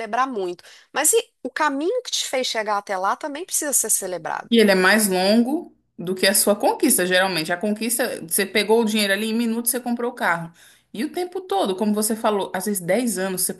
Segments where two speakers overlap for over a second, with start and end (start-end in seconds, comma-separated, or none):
none